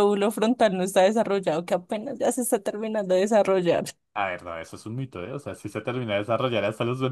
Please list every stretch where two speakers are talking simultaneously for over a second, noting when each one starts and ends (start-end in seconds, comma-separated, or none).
none